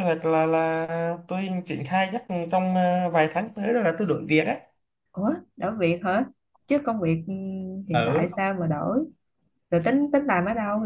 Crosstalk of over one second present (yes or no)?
no